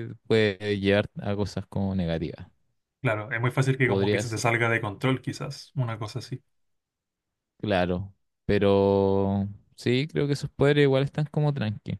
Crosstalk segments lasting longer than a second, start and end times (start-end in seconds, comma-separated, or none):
none